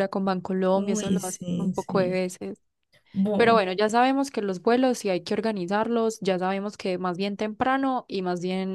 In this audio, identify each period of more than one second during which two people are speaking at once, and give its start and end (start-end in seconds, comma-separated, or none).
0.7-2.2